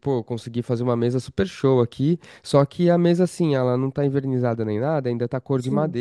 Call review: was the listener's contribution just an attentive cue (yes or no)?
yes